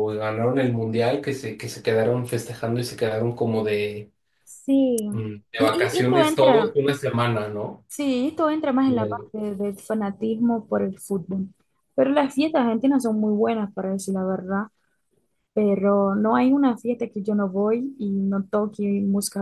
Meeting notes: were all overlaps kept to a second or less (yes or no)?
no